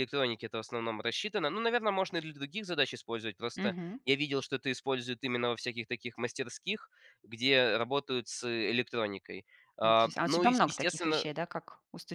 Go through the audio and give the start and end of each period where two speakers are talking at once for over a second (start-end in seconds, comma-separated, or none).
9.8-11.3